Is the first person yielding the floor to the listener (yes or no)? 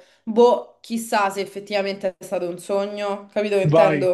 yes